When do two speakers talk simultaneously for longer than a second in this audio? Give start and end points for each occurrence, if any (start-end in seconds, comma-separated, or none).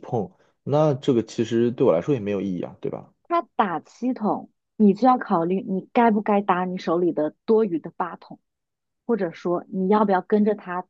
none